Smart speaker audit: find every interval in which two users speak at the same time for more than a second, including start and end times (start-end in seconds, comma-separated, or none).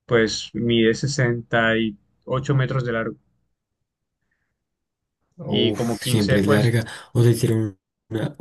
5.5-6.8